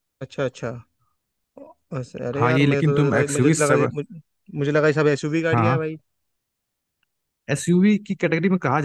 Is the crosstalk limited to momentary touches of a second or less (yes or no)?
no